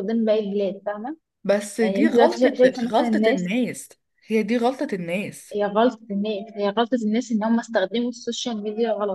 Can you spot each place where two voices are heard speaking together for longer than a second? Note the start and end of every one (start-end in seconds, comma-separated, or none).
1.8-3.5